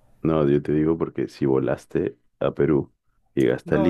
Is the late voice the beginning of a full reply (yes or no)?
yes